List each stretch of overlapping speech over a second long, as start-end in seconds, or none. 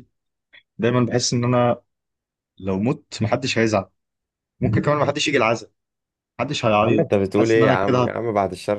6.8-8.2